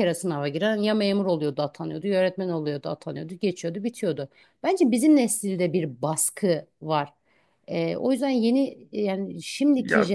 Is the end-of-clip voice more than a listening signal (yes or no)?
no